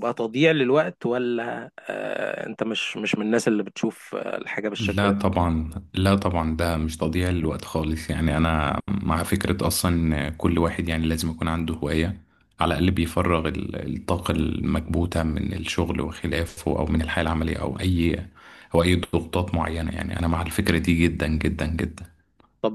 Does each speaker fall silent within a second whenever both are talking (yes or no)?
yes